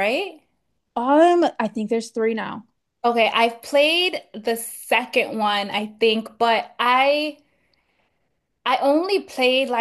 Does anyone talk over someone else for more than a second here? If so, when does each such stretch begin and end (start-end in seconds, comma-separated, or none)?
none